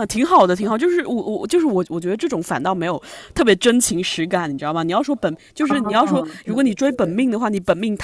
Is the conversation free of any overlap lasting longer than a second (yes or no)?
no